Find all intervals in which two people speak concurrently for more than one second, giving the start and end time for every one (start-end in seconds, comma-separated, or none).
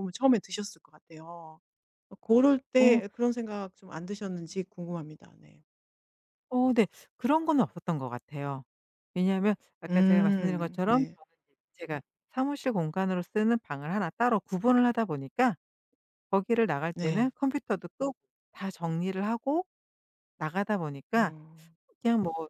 9.9-11.2